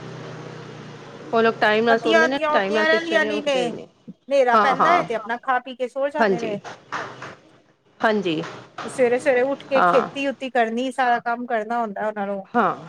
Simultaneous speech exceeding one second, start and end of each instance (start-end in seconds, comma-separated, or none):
1.9-3.4